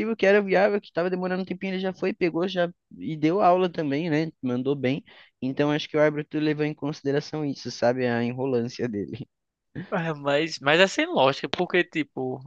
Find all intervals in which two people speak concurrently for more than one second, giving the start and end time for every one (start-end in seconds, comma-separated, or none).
none